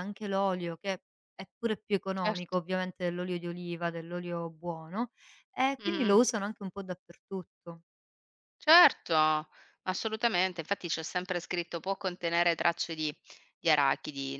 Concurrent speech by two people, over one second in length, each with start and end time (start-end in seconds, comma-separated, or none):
none